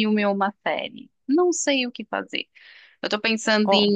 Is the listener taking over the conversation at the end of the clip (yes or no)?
no